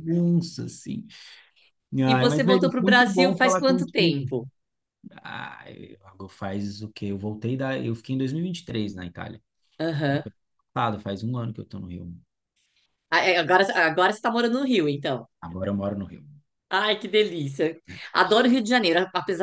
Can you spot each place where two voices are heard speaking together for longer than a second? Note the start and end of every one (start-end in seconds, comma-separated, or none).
2.0-4.3